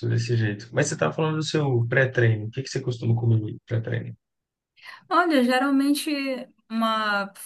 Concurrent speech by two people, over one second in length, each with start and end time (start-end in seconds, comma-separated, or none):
none